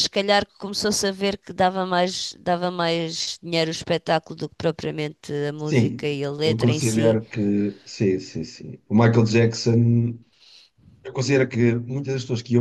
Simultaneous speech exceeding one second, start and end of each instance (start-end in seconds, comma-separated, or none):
5.6-7.2